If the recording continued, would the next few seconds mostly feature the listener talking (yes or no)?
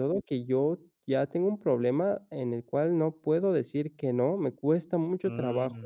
no